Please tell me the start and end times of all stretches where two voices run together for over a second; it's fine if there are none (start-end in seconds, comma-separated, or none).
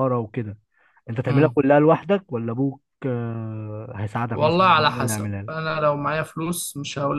4.3-5.7